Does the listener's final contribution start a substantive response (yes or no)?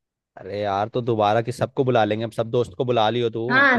yes